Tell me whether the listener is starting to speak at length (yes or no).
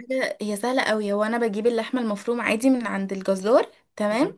no